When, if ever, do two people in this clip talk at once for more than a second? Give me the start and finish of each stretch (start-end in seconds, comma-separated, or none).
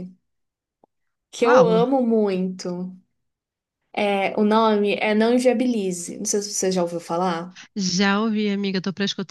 none